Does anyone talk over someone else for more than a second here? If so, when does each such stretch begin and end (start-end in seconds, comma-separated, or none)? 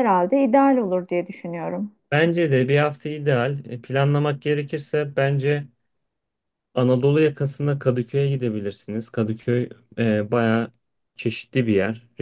none